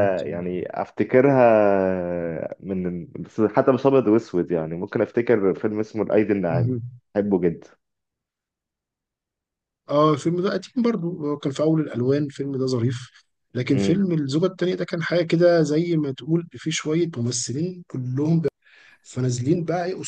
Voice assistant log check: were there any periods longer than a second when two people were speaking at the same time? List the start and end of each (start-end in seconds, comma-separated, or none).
none